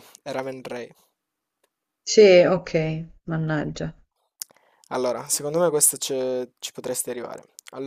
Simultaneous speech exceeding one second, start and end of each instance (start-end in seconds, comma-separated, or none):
none